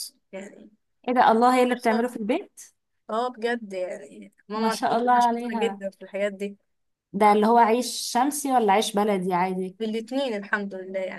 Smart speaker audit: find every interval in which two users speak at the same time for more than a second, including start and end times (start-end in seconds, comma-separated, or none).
4.5-5.8